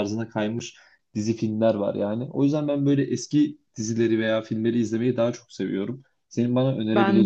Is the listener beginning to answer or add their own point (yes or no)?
no